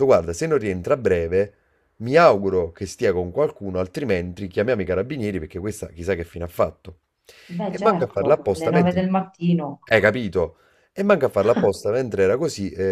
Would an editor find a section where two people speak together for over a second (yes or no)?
yes